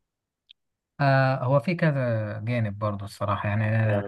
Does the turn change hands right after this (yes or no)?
no